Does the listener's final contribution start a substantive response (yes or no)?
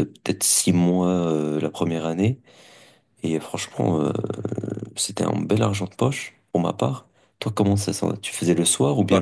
yes